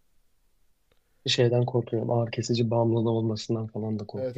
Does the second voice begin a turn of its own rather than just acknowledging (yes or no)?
yes